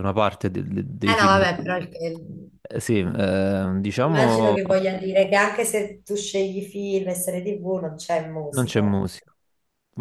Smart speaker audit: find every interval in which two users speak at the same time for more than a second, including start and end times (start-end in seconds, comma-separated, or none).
none